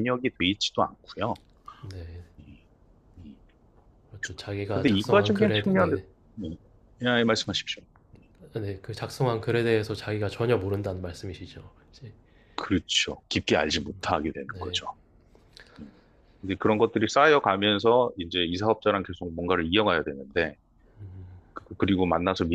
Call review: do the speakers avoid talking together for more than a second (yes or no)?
no